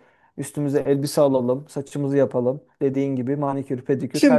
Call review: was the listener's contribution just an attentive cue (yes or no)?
no